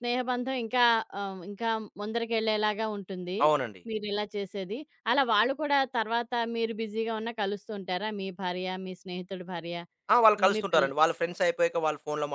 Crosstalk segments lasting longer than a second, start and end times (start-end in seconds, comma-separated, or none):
none